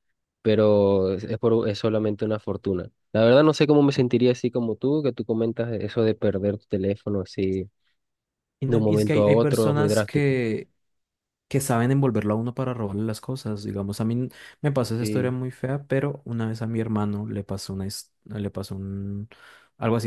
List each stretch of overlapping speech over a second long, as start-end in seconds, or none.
8.7-10.4